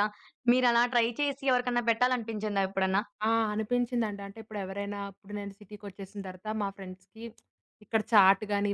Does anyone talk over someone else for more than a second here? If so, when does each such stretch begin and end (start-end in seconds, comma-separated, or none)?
none